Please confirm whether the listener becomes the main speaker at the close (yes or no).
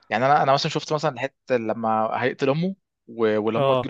no